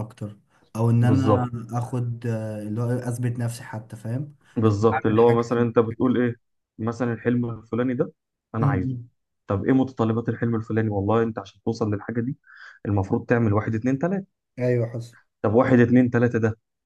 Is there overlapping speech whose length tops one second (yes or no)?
yes